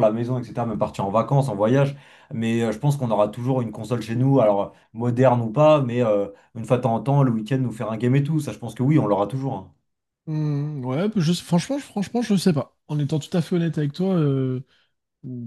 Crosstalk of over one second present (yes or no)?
no